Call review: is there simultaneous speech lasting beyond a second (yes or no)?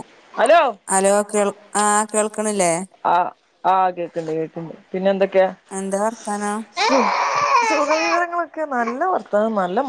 no